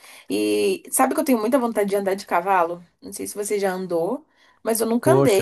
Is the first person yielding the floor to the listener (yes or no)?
no